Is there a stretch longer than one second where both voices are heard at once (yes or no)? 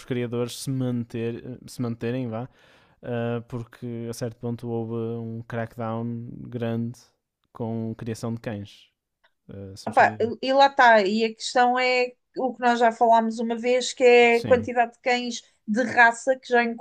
no